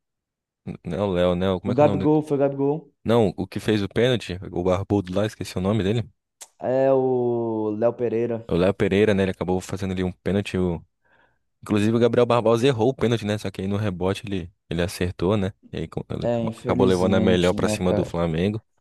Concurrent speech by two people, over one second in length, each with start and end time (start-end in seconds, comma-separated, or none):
16.2-18.2